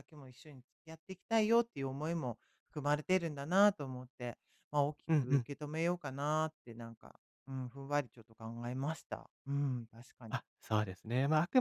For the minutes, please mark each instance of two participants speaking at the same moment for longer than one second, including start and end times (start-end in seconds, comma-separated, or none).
none